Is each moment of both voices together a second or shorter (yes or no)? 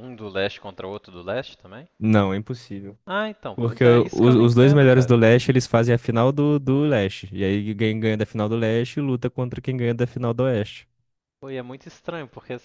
no